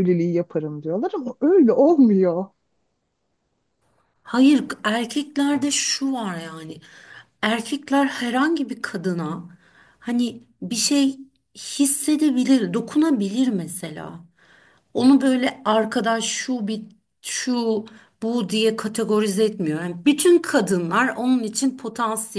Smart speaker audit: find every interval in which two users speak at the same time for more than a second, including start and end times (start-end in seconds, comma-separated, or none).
none